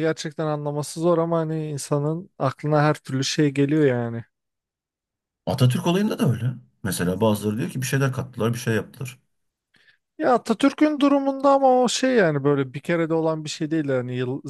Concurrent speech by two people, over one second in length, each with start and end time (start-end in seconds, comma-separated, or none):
none